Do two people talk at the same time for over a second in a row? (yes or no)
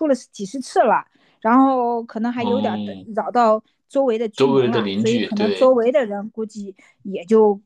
yes